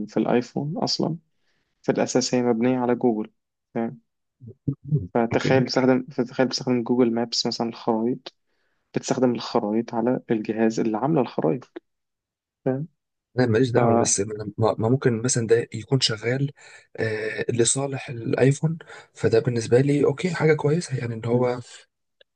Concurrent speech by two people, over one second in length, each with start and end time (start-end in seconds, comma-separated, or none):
none